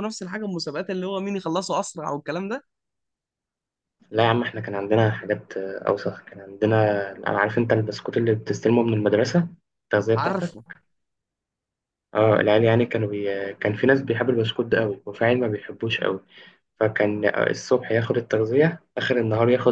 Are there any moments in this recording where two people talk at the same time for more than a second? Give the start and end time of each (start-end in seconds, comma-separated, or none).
none